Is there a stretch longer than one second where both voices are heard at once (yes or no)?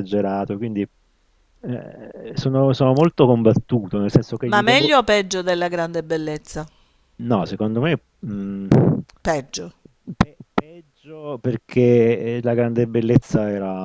no